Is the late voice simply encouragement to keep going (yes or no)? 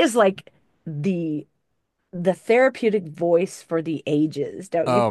no